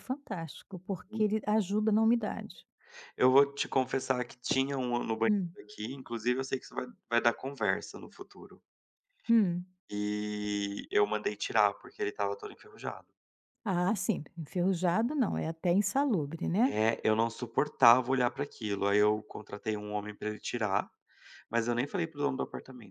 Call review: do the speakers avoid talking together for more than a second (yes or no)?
yes